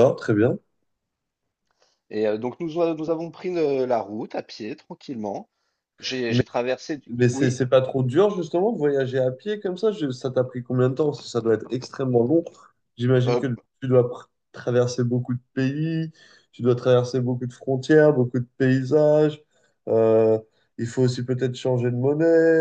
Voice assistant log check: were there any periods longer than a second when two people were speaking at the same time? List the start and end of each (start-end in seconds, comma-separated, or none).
none